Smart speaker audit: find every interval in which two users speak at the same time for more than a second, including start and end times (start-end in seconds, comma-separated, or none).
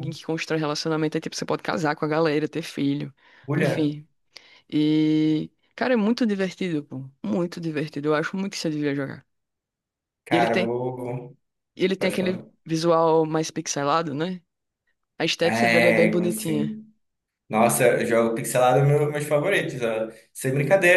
15.4-16.8